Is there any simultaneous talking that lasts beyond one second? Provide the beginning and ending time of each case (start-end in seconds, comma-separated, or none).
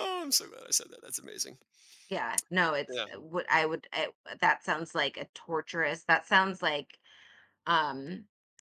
none